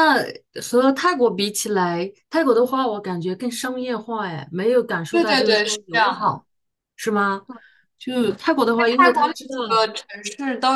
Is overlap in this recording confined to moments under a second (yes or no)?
no